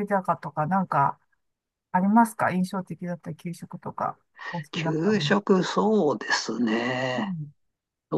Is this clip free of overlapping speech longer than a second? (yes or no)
yes